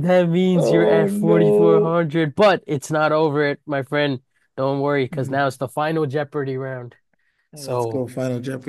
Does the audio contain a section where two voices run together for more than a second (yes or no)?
yes